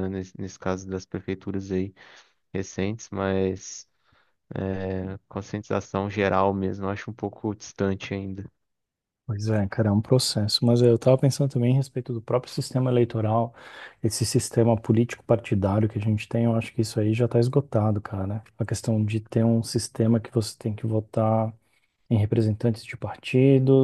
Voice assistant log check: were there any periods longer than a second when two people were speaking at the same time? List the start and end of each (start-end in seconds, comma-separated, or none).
none